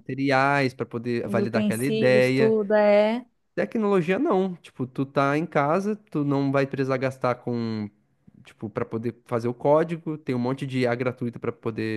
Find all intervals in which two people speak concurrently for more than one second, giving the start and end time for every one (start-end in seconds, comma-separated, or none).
1.2-2.6